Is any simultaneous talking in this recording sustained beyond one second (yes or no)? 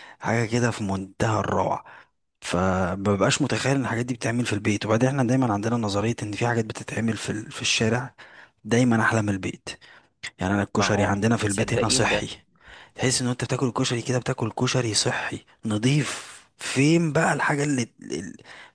yes